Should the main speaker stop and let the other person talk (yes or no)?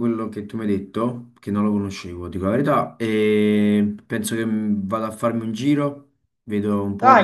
no